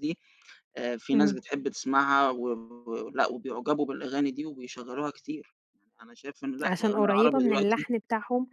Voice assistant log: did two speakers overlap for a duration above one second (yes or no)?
yes